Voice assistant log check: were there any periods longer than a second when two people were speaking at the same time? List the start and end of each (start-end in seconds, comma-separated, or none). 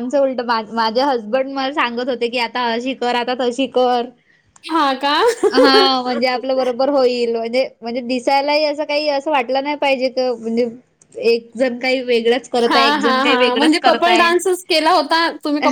12.7-14.3